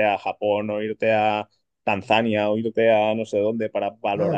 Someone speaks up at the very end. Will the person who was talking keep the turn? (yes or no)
no